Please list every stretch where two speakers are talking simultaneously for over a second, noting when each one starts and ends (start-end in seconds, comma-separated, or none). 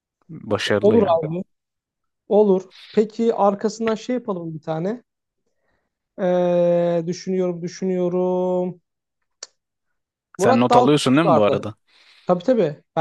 10.4-11.7